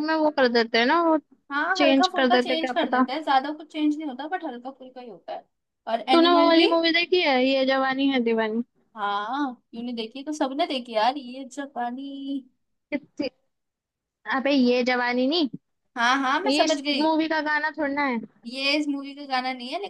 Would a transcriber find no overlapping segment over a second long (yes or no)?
no